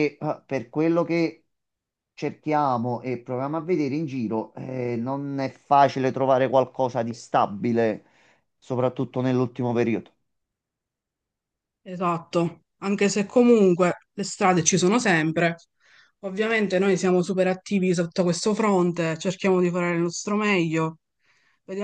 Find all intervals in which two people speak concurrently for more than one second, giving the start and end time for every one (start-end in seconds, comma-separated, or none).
none